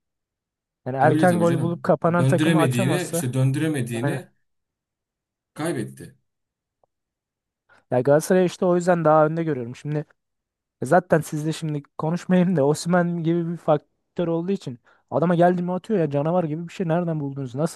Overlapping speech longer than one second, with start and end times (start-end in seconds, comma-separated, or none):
1.0-3.2